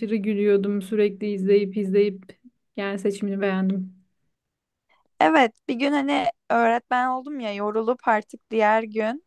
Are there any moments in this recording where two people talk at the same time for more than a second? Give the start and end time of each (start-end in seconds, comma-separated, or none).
none